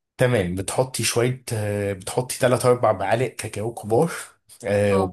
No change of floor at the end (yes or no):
yes